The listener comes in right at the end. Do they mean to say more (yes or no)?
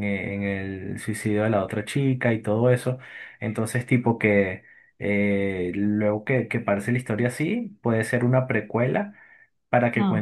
no